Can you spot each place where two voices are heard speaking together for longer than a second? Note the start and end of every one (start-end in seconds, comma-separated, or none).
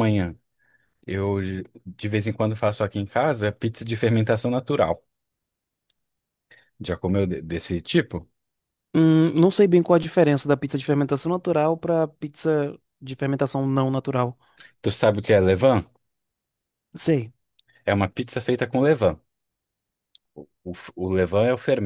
none